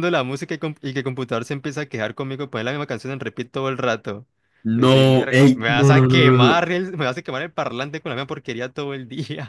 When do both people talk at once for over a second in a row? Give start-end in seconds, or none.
4.7-6.6